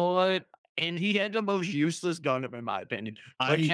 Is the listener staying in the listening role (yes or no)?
yes